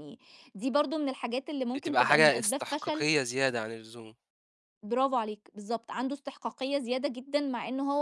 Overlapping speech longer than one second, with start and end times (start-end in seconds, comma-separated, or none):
1.8-3.1